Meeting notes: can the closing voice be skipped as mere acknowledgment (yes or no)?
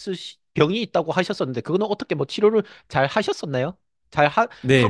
no